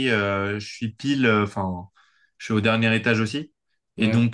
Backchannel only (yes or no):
yes